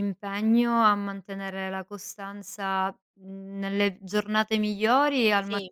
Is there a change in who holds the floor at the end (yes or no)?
no